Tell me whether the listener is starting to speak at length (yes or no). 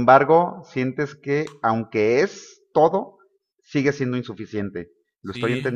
yes